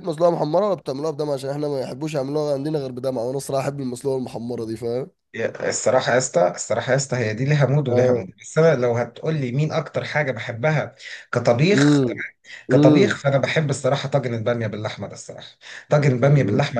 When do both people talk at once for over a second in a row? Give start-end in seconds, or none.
none